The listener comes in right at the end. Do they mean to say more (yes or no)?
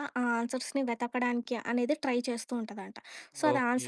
no